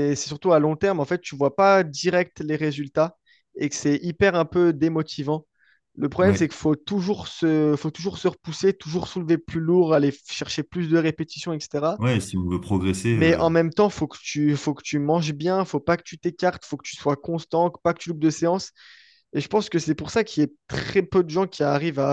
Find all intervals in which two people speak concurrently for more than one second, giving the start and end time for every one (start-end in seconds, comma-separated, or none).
none